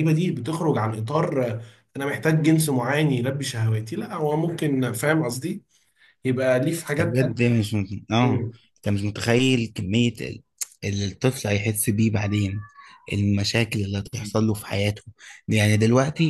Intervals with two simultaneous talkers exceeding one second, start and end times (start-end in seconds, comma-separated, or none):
none